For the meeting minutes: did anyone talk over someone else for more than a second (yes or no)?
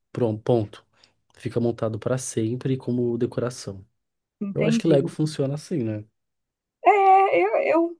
no